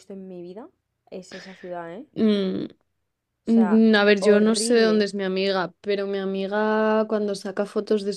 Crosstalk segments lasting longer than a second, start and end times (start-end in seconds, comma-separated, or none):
3.5-5.1